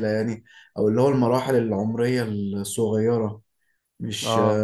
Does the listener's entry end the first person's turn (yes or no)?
yes